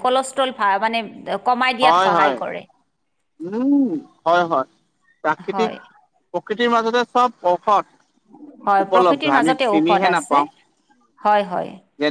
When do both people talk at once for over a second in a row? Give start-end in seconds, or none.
8.7-10.4